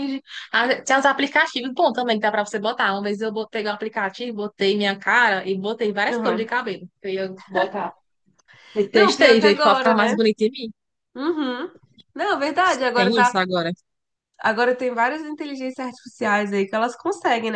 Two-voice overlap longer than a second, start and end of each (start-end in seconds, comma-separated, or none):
8.9-10.2